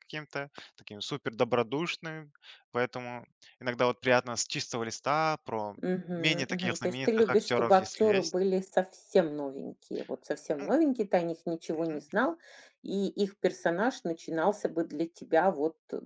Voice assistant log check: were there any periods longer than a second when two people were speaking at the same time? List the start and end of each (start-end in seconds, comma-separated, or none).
5.8-8.4